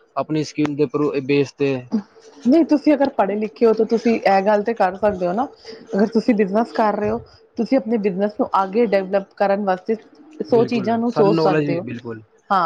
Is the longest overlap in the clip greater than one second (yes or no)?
yes